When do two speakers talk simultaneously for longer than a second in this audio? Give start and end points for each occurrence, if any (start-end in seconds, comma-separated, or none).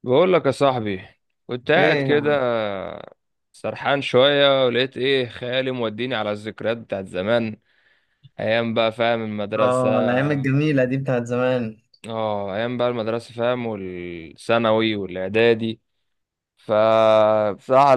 none